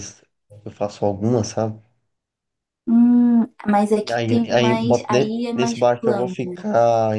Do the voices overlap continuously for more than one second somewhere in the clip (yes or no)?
yes